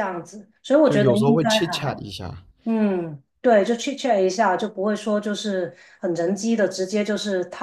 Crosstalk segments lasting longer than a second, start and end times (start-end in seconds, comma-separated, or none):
0.8-2.0